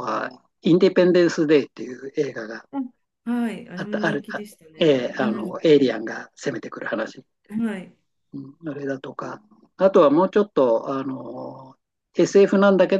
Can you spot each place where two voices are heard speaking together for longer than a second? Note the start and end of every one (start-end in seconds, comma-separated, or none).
3.8-5.6